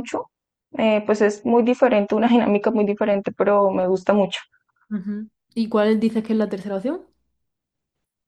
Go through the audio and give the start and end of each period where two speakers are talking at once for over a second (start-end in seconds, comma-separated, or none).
none